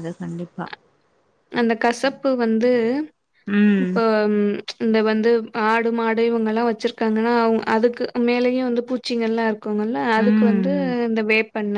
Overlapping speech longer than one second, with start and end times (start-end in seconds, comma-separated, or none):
none